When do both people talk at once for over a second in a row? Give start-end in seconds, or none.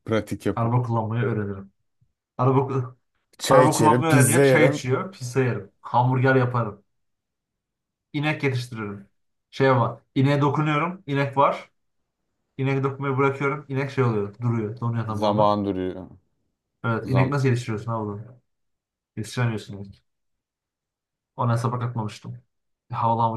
3.5-4.8